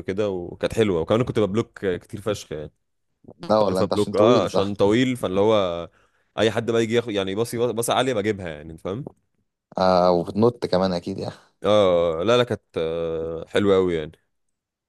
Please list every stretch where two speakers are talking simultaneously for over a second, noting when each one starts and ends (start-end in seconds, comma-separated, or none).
3.5-4.7